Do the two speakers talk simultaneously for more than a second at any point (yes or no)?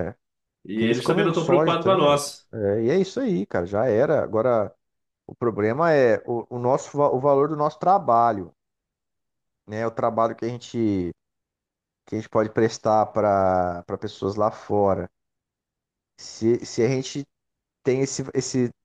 yes